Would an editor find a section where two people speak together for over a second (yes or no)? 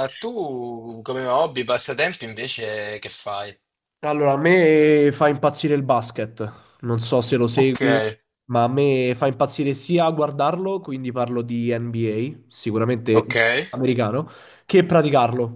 no